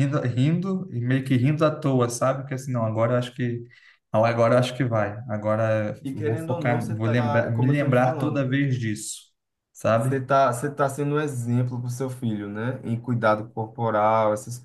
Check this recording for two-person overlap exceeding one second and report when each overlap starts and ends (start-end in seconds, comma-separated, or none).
6.0-8.5